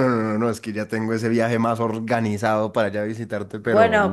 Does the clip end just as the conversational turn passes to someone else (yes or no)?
yes